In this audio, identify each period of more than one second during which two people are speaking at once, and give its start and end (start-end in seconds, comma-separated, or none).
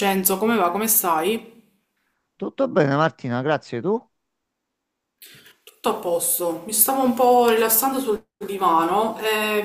none